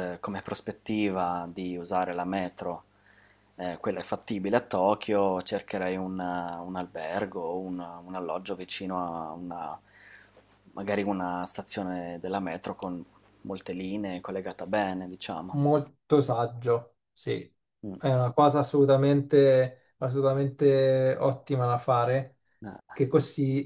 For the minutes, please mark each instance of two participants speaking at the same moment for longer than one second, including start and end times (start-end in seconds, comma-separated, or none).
none